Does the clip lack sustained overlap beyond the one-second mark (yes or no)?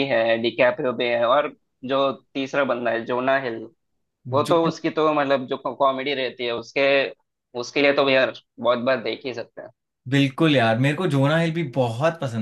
yes